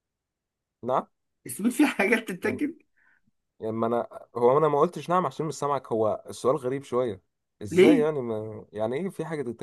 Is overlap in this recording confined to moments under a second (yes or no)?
yes